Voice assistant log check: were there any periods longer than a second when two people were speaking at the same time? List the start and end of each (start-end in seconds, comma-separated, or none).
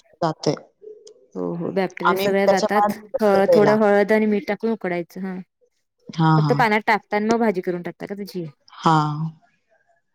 2.1-3.8